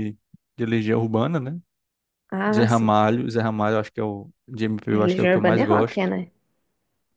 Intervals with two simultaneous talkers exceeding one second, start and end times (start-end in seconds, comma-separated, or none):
4.9-6.1